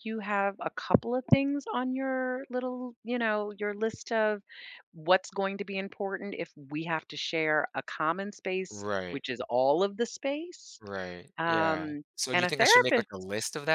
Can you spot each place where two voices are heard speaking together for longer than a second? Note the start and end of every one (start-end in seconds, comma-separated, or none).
11.4-13.1